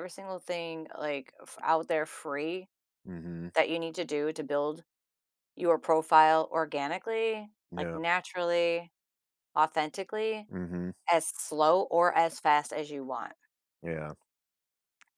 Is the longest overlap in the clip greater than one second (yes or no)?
no